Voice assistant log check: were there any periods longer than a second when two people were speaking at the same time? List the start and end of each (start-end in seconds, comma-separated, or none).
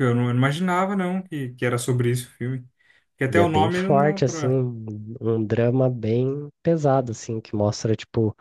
3.3-4.6